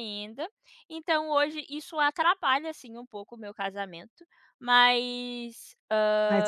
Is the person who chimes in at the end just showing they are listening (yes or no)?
no